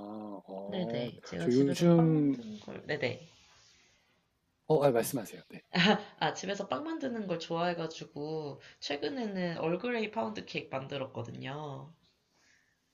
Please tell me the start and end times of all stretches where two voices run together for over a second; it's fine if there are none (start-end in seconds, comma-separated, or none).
0.7-2.4